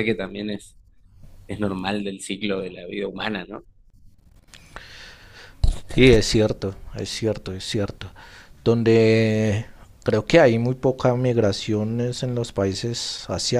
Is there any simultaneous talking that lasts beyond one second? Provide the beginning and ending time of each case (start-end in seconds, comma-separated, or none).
none